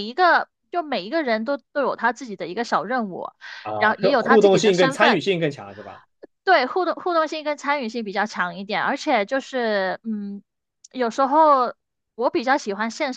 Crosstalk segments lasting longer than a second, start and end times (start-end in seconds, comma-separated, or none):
3.8-5.2